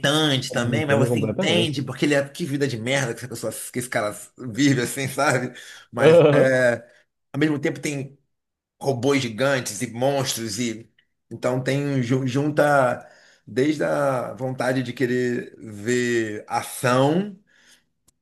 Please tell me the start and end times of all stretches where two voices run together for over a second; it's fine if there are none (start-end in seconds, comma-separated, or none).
0.5-1.8